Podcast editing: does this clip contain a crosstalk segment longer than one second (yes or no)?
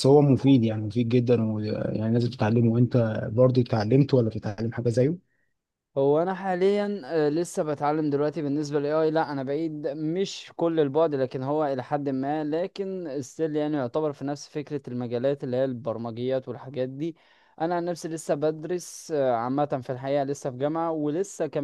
no